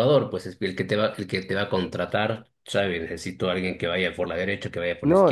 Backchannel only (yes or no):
no